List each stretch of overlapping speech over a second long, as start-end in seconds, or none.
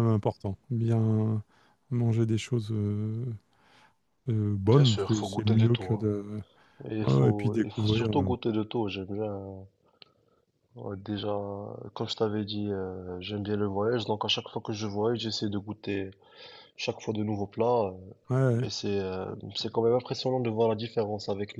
4.7-6.1, 7.0-8.3